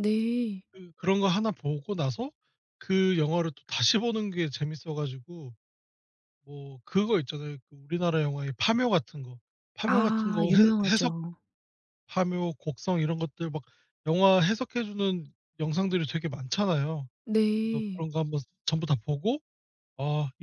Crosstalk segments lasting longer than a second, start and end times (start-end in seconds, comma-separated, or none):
9.8-11.1